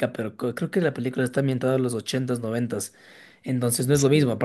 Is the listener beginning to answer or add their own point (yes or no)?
no